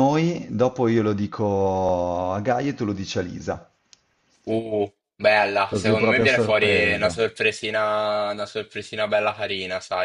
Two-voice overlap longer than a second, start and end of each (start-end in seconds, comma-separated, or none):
5.6-7.3